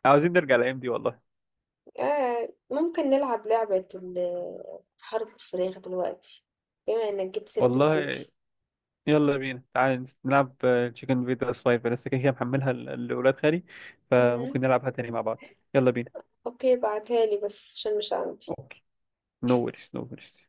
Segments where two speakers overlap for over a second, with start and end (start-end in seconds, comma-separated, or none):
none